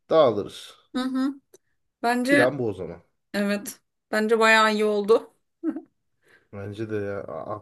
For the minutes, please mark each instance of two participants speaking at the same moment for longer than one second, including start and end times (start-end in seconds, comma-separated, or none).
none